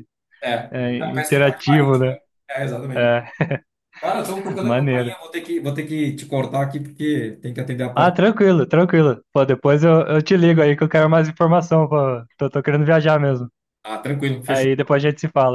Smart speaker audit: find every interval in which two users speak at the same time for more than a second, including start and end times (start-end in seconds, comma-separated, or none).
0.7-2.0